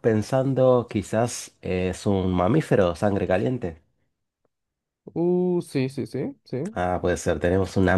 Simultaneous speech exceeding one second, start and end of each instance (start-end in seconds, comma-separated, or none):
none